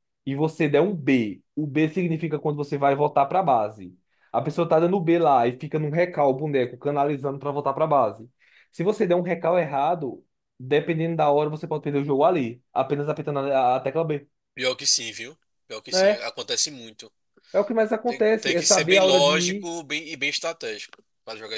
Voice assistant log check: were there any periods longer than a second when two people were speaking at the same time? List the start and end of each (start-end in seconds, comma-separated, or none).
18.0-19.7